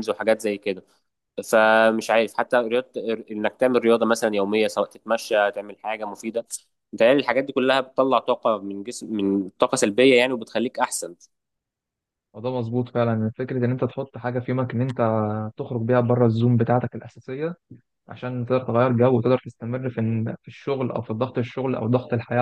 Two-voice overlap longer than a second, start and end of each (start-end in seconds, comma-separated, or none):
none